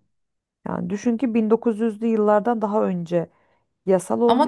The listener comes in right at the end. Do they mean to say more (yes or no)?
yes